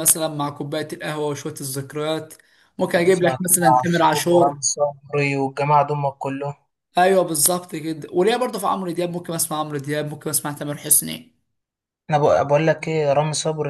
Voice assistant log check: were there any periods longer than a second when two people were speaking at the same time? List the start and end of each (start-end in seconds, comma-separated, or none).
3.0-4.6